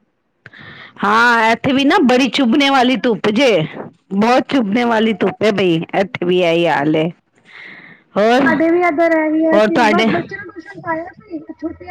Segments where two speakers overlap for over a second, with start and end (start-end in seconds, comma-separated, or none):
none